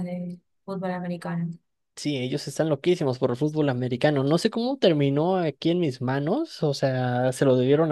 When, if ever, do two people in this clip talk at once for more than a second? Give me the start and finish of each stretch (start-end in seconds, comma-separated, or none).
none